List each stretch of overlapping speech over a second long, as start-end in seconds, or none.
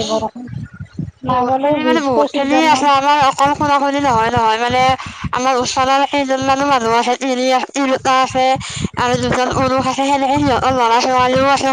1.3-2.9